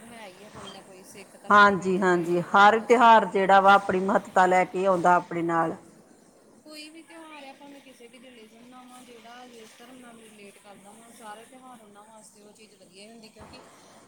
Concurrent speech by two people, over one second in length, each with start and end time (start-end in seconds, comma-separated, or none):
1.5-3.7